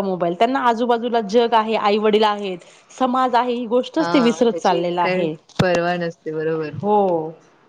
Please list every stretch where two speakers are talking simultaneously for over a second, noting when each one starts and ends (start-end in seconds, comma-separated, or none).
4.0-5.2